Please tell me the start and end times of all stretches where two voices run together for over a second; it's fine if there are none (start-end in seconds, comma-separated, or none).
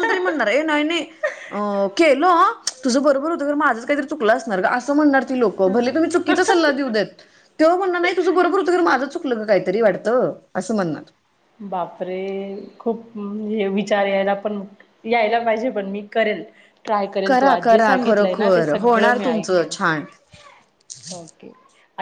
17.3-19.7